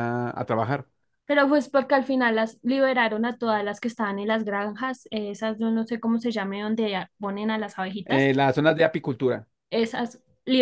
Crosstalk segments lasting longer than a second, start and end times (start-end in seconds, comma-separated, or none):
none